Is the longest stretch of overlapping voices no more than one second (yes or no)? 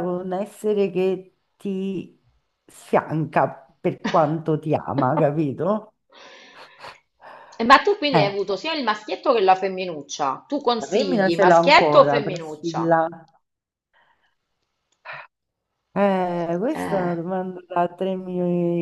no